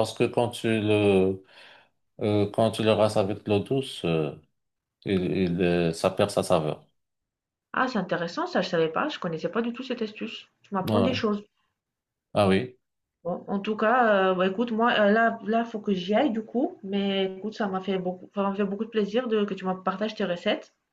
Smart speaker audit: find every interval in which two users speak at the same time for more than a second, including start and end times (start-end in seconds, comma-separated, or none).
none